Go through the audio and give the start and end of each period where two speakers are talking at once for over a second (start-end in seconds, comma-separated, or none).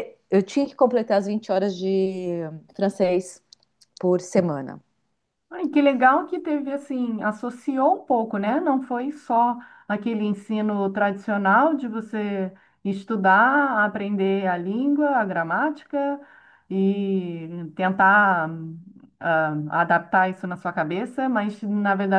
none